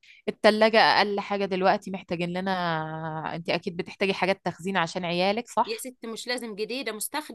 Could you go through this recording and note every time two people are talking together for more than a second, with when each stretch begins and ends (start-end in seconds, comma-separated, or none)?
none